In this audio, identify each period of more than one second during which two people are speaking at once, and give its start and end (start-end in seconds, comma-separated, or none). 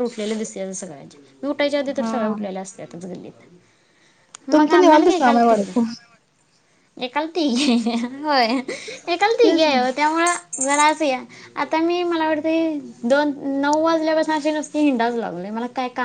4.5-5.7